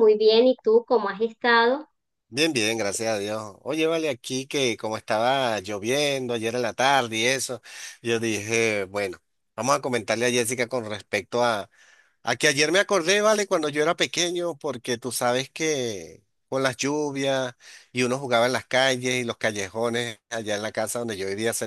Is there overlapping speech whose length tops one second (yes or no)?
no